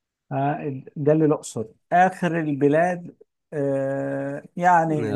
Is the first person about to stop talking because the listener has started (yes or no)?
no